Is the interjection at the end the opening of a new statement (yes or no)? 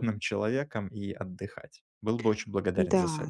yes